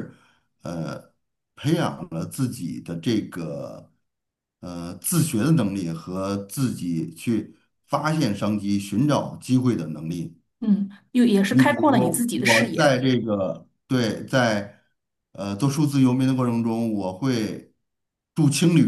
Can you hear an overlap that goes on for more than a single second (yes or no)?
yes